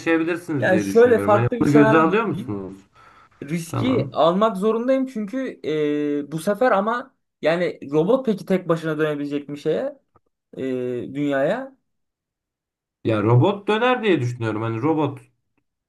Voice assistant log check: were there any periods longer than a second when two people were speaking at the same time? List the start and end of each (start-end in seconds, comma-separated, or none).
0.6-2.6